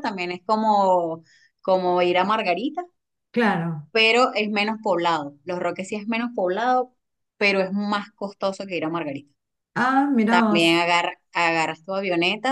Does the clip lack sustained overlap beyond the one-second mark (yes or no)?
yes